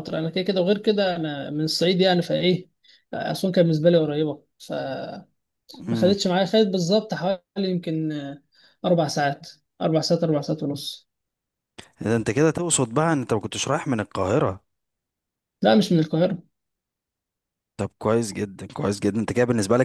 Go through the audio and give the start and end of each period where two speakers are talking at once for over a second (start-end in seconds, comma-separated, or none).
none